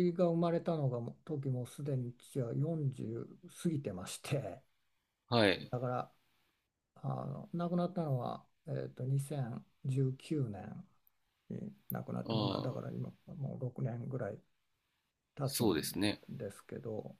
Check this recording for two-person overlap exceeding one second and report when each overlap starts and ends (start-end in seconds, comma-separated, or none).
none